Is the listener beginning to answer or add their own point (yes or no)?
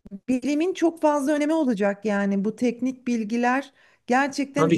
yes